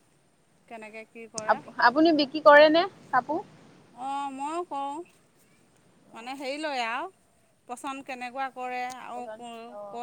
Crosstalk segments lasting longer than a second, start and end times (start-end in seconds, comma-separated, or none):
none